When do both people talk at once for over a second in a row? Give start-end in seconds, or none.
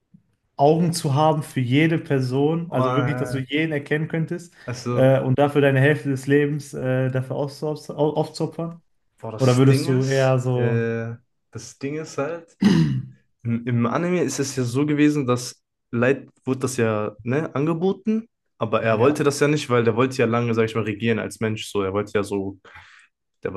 9.4-10.8